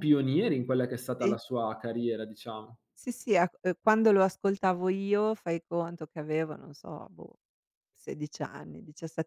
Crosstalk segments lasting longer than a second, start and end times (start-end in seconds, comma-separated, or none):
none